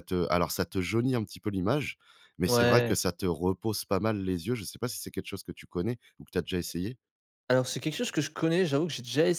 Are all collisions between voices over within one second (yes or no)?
yes